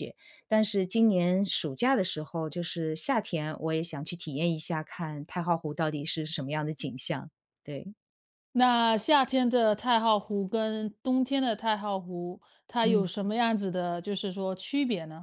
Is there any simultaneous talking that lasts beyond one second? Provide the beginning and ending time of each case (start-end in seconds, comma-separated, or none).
none